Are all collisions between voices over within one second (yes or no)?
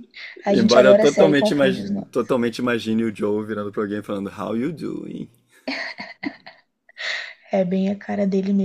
no